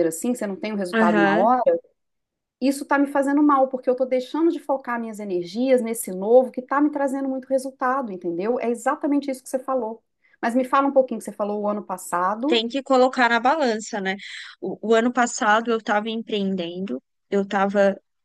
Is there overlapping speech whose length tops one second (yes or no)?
no